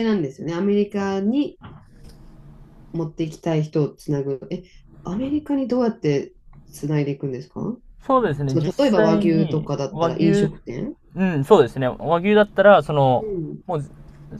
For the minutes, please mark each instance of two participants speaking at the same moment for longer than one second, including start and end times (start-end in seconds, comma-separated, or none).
8.5-10.5